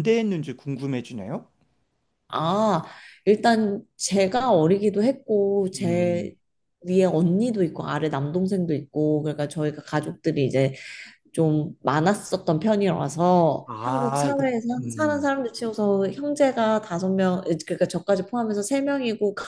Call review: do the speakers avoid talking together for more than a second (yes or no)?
no